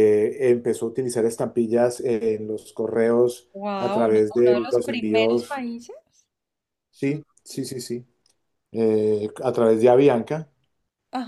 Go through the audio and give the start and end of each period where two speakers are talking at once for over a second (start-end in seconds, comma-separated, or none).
3.5-5.6